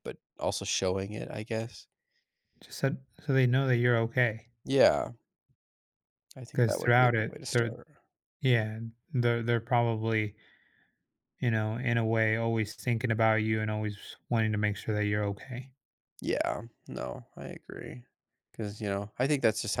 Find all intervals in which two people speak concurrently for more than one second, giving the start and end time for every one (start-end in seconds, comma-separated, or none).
6.5-7.8